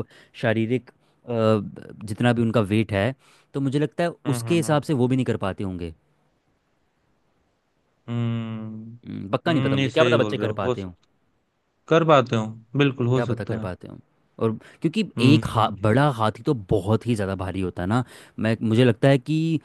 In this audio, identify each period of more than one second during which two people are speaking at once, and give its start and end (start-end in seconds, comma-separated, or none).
9.5-10.8